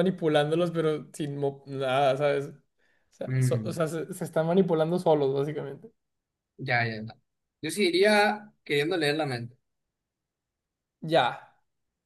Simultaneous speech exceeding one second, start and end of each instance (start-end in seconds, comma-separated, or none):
none